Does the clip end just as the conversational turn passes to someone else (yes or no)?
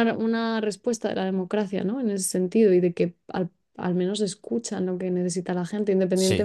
no